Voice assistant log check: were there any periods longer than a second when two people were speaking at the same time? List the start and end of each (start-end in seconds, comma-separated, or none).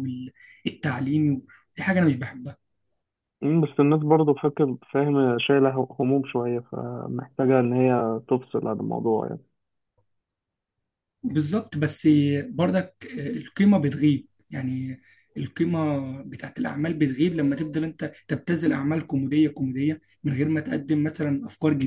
none